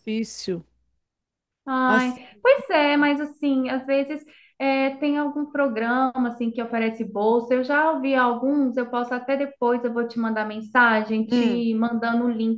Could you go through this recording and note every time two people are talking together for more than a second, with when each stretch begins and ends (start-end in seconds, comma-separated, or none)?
none